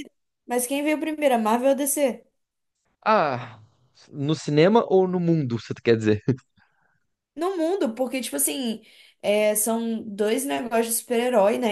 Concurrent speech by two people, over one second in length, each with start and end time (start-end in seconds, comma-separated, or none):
none